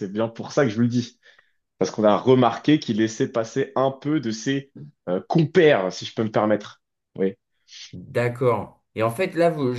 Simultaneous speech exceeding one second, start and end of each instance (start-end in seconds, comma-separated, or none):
none